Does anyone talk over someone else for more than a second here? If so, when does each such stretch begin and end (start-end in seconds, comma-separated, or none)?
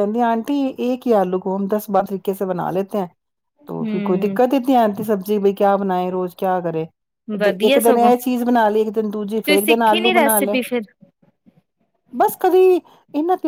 9.3-10.6